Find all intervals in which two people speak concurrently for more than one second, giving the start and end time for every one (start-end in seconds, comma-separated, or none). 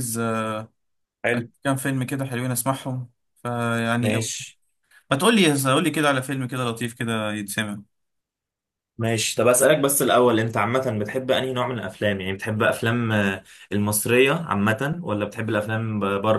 none